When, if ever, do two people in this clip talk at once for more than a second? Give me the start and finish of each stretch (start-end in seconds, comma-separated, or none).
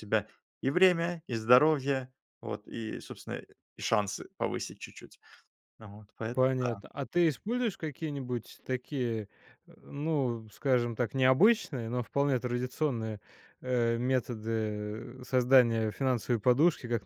none